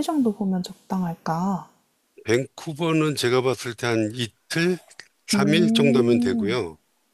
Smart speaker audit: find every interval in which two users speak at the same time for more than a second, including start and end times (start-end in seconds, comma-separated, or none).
5.3-6.6